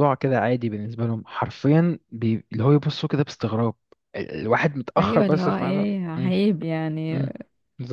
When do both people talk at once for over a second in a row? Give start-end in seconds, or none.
5.0-6.3